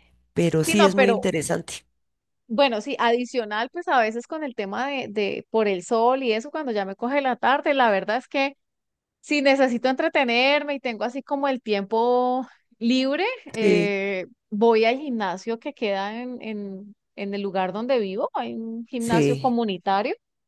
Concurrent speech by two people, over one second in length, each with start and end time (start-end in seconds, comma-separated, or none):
none